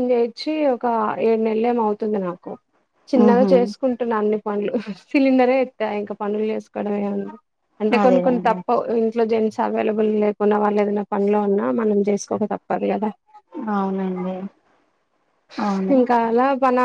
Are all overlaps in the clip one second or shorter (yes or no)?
yes